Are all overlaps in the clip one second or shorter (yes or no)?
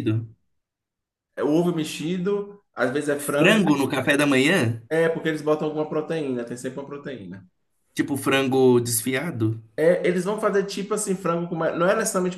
yes